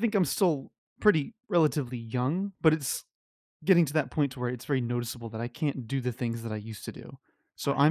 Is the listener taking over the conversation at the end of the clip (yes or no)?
no